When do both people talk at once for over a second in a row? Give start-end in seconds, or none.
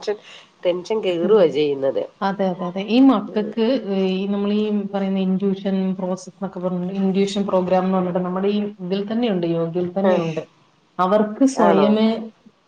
none